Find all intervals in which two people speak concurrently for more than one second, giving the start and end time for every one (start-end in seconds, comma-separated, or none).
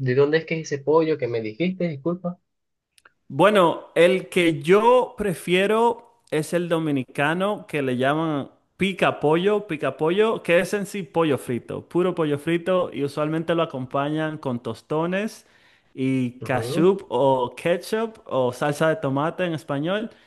none